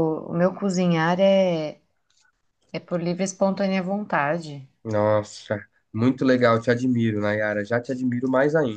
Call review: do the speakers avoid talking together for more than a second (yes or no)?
yes